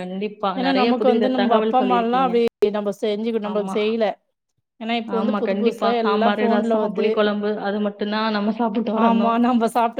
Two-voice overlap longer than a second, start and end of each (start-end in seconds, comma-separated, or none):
0.6-2.4, 5.1-7.1